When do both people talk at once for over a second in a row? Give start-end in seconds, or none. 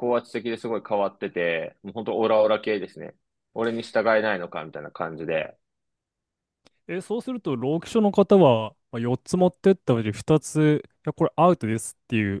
none